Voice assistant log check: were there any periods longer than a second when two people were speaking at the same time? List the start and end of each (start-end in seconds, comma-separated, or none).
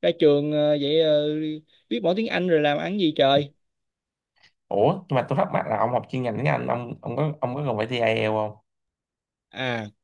none